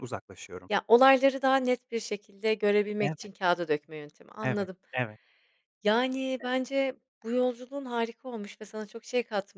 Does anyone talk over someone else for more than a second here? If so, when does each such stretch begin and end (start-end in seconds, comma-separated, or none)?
none